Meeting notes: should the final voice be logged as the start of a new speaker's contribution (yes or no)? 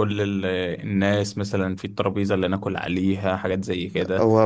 yes